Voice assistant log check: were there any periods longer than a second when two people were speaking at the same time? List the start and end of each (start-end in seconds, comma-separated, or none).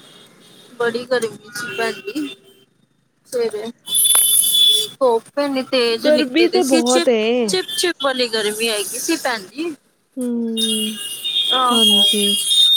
6.0-7.5